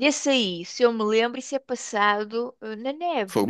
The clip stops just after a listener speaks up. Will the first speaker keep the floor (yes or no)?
no